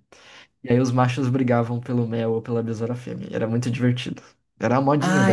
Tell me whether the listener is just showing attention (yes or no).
no